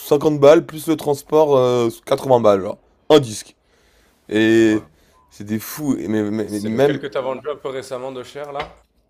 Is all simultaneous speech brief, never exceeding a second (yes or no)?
yes